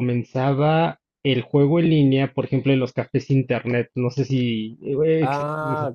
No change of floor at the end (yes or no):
no